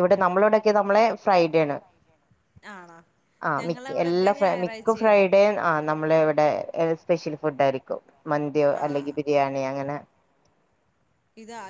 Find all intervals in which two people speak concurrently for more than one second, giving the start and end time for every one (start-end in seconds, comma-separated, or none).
3.6-5.2